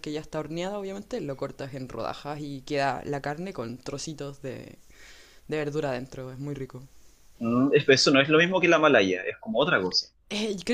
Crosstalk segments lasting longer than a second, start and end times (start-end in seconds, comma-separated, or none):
none